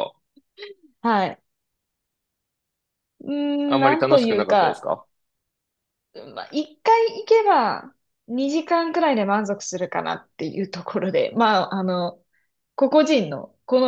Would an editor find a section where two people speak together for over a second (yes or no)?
yes